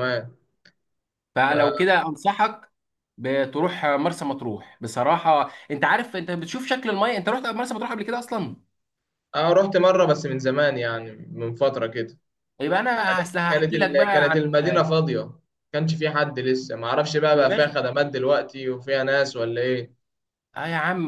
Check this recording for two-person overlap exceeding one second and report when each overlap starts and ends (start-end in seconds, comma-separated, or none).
13.1-14.5